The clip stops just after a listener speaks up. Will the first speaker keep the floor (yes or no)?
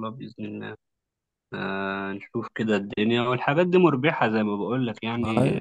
yes